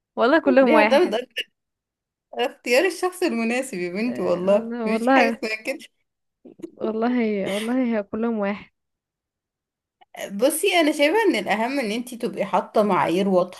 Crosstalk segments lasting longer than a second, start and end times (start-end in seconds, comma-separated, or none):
4.0-5.4